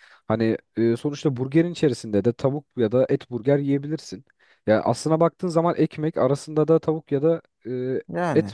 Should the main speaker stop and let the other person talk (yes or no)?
no